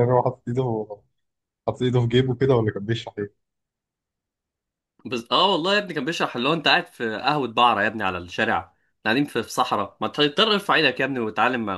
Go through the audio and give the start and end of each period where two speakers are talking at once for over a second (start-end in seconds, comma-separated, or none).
none